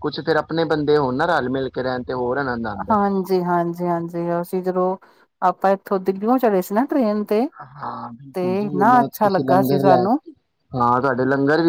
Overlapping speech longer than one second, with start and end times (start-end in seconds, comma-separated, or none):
8.3-10.2